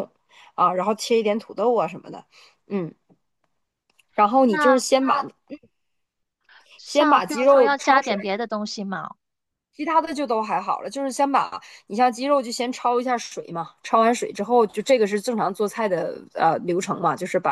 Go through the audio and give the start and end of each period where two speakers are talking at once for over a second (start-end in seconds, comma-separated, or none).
6.8-8.3